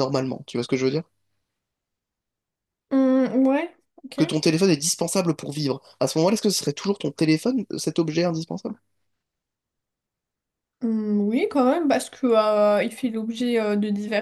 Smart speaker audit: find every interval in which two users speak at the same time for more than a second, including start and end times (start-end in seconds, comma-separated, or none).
none